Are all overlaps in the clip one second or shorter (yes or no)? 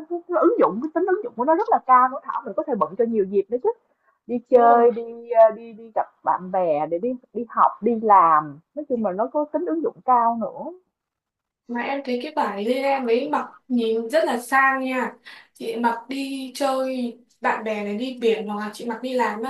yes